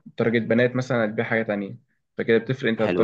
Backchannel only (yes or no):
yes